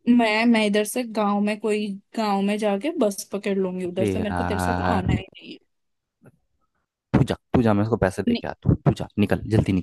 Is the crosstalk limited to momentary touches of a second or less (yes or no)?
no